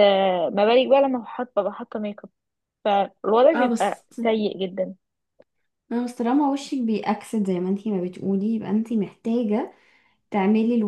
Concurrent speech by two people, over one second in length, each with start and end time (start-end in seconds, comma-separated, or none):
none